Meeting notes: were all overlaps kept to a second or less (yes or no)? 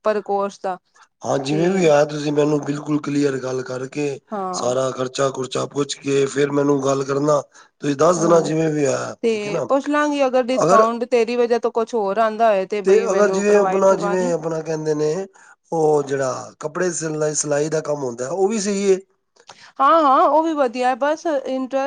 no